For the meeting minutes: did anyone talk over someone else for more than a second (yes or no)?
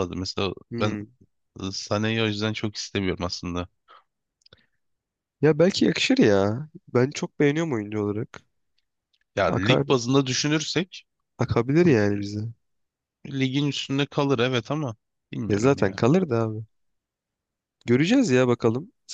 no